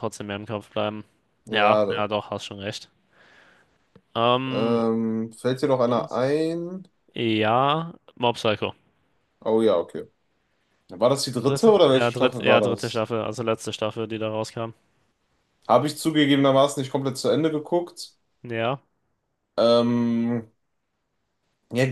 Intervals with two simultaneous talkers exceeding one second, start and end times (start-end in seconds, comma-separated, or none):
11.4-13.1